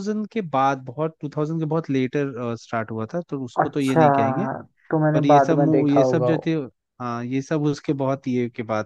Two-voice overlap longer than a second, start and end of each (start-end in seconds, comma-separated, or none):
5.1-6.5